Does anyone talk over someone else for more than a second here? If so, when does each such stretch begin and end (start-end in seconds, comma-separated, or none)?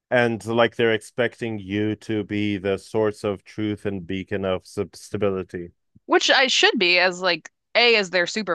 none